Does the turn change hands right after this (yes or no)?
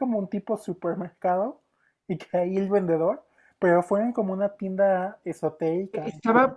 yes